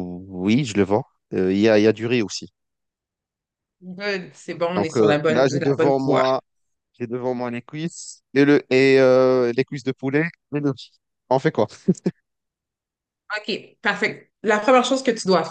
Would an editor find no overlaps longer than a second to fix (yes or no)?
no